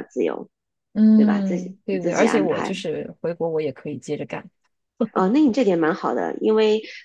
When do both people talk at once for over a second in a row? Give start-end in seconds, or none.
1.1-2.8